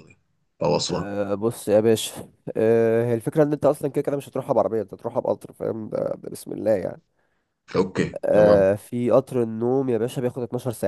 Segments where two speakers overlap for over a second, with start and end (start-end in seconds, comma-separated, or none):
none